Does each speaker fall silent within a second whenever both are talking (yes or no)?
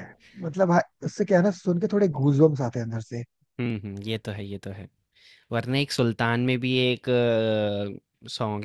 yes